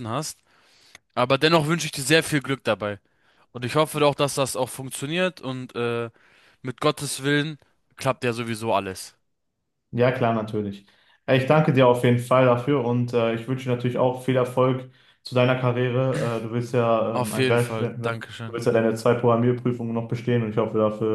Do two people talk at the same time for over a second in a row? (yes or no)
yes